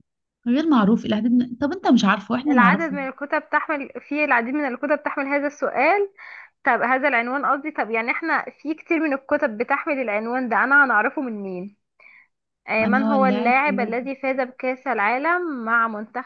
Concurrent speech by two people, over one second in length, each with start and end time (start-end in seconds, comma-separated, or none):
12.8-14.1